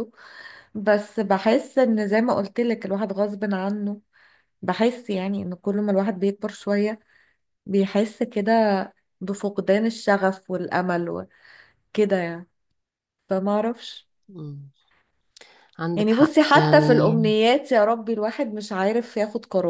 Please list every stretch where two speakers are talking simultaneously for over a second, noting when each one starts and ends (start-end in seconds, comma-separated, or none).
15.9-17.2